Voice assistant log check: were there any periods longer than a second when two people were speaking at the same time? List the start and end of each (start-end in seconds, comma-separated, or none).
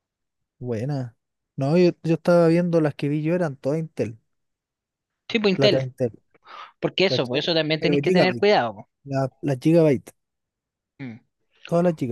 7.1-8.5